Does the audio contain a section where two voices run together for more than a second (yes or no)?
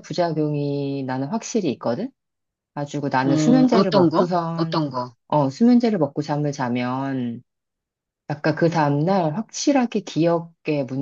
yes